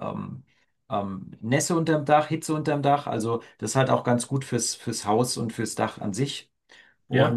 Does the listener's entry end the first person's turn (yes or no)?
no